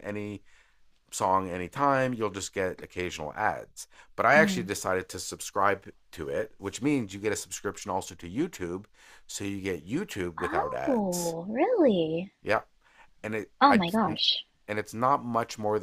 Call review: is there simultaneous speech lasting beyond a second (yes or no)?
no